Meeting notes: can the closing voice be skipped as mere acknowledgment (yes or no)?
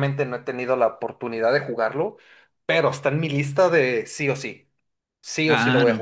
no